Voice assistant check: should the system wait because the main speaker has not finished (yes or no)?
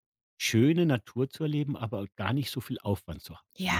no